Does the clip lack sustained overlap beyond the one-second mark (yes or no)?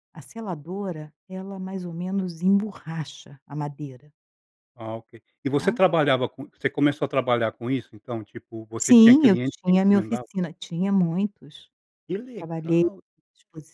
no